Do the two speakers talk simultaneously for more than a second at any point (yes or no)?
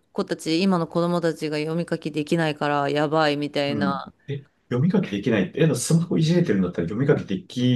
no